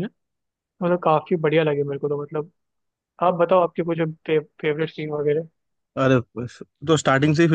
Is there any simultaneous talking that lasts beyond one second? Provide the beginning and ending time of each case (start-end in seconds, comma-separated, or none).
none